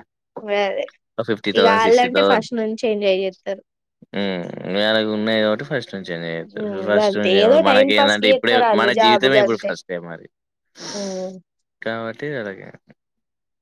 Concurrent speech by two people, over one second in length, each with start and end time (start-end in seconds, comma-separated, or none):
6.5-8.6